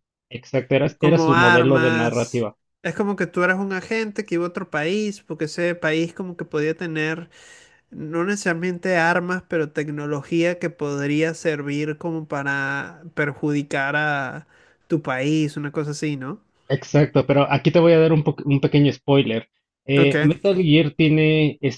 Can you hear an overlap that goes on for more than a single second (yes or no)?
yes